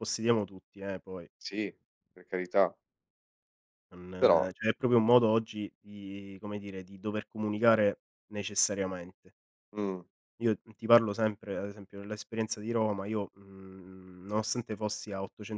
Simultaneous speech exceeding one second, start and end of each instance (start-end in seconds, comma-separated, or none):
none